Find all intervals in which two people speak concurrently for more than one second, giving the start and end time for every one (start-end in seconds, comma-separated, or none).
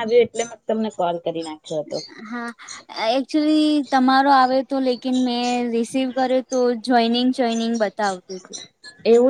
none